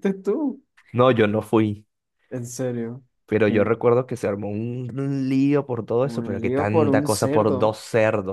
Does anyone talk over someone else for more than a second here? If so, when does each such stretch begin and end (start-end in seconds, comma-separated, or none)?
6.0-7.7